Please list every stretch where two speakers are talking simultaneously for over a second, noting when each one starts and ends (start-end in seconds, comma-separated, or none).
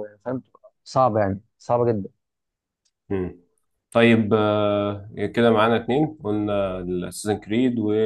none